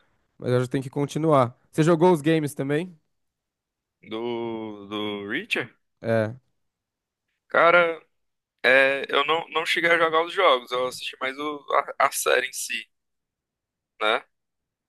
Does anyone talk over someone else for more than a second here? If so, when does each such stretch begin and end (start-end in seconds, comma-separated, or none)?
none